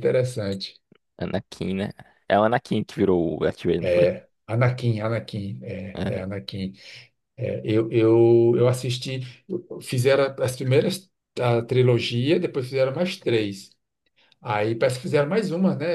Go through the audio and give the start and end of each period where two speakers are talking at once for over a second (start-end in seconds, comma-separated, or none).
none